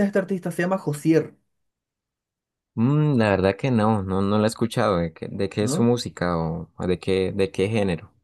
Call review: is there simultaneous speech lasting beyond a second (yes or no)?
no